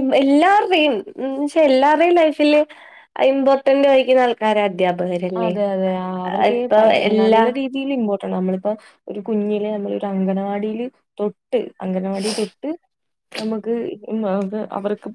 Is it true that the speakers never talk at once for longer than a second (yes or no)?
yes